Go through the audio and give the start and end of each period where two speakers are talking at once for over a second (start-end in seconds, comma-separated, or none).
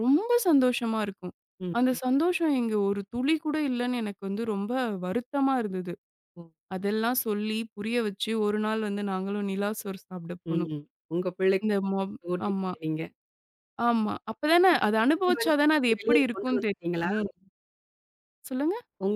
15.2-17.1